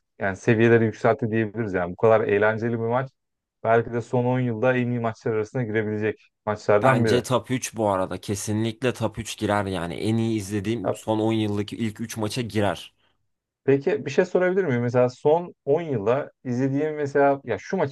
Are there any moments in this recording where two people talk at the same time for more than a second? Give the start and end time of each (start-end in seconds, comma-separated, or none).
none